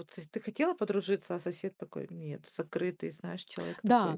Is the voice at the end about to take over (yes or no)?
yes